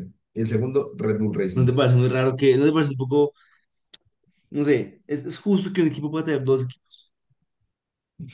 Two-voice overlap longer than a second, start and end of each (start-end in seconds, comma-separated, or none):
none